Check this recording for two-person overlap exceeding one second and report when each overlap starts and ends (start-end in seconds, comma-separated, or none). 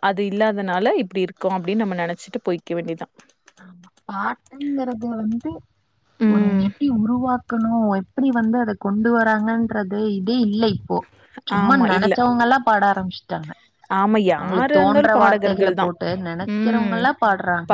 14.4-15.8